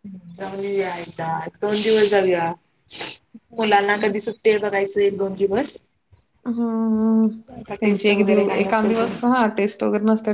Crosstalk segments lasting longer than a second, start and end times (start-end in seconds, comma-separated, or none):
7.8-9.2